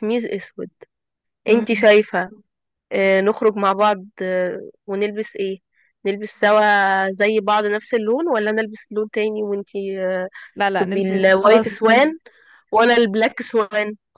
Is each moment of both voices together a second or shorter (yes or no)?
no